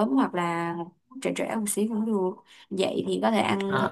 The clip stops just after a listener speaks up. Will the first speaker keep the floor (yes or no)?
yes